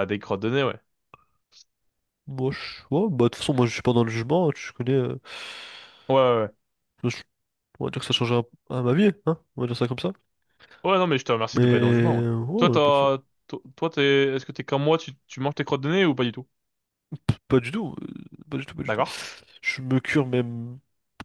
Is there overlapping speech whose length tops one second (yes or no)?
yes